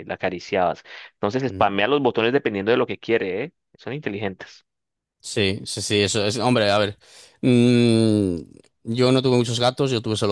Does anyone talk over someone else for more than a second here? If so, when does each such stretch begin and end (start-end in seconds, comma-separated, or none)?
none